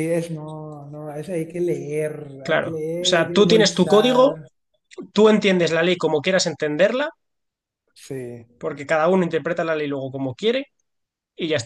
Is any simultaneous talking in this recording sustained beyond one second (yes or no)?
yes